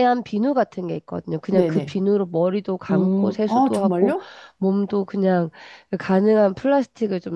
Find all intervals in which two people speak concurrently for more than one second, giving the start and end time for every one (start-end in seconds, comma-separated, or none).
2.9-4.2